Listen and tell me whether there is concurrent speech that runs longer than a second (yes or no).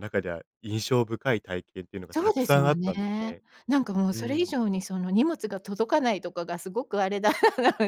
yes